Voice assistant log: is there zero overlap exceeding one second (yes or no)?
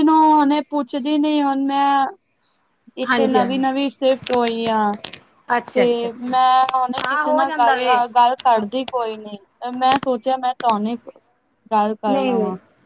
no